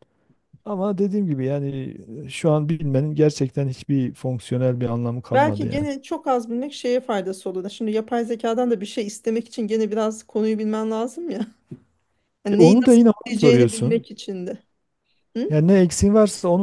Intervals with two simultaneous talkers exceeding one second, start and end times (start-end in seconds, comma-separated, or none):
12.5-14.1